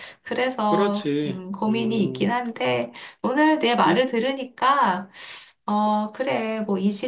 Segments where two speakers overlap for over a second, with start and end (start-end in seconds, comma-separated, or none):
0.7-2.3